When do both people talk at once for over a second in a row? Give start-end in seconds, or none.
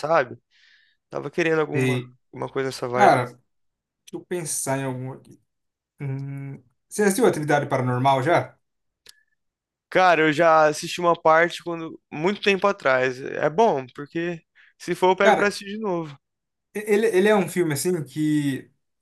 none